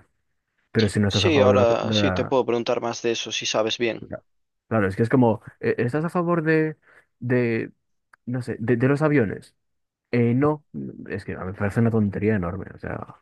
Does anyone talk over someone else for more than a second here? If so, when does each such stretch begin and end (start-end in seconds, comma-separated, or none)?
1.1-2.4